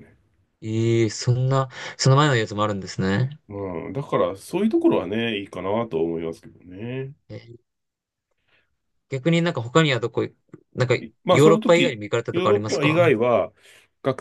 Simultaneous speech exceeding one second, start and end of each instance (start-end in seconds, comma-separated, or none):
11.3-13.0